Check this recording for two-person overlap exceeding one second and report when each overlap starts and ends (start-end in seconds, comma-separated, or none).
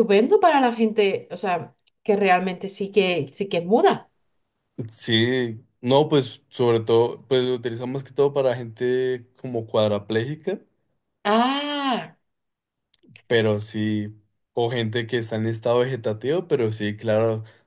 none